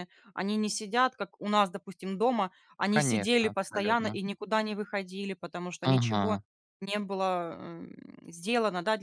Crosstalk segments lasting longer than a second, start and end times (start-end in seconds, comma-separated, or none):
2.9-4.2